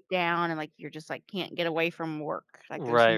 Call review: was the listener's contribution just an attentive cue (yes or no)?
no